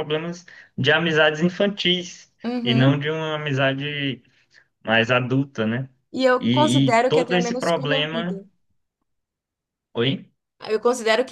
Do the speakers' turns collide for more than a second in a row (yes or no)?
yes